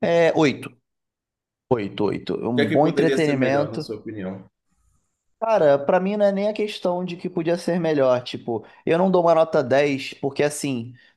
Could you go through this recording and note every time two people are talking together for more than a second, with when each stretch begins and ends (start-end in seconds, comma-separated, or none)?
2.5-3.9